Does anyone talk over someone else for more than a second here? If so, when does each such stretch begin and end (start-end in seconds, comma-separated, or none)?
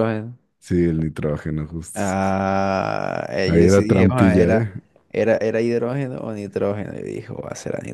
3.5-4.7